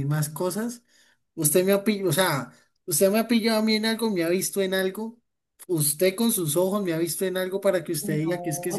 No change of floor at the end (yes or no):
no